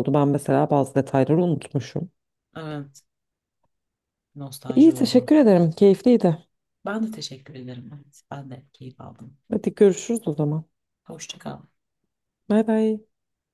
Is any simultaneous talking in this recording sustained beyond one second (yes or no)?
no